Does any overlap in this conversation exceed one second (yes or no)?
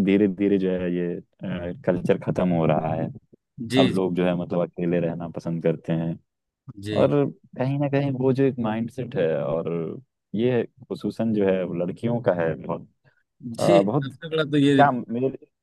no